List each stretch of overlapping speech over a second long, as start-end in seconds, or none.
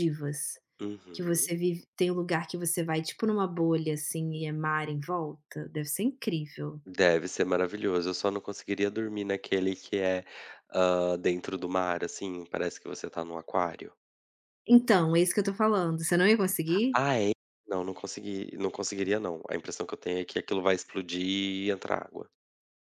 none